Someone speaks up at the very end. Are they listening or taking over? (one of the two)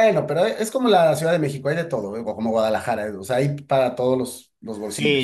taking over